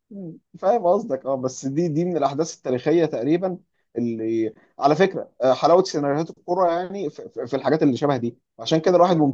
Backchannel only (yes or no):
yes